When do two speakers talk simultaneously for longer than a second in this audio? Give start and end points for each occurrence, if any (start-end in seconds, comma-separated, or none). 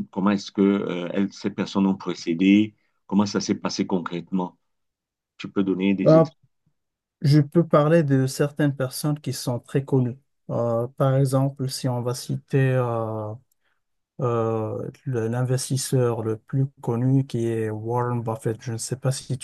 none